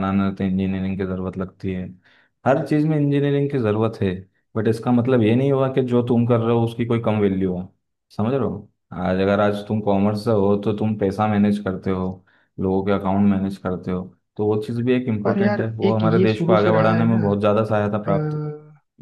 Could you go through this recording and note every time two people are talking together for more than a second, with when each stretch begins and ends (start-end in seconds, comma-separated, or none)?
15.2-17.2